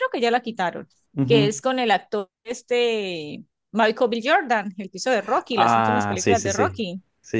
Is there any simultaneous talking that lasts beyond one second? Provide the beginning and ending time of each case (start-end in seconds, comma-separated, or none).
5.5-6.8